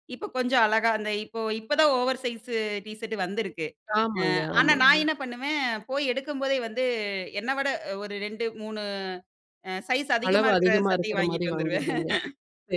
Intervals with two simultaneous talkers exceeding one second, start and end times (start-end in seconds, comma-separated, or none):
10.3-11.9